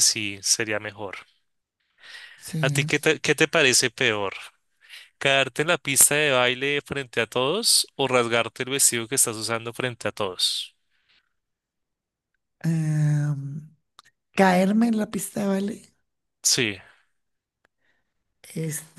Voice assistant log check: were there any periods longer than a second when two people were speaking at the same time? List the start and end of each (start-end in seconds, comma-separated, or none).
none